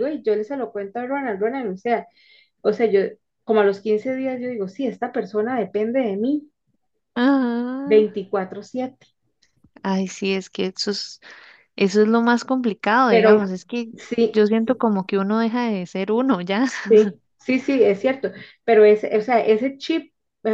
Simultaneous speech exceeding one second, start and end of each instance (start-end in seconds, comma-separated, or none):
none